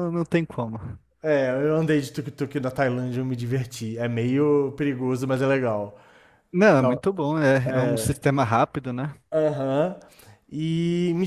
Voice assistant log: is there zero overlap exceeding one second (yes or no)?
yes